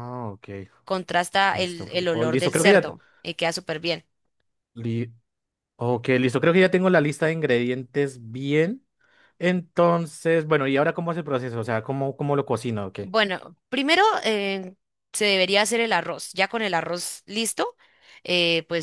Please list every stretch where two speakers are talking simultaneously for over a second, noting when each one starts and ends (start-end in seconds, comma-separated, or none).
1.5-2.7